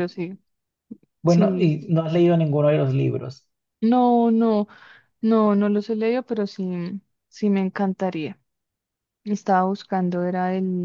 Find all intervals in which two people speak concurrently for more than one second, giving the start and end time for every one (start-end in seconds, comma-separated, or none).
none